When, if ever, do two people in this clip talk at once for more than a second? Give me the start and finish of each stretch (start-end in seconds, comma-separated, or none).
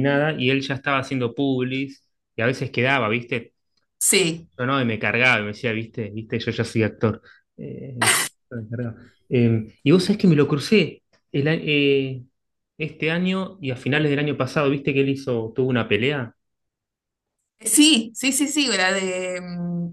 none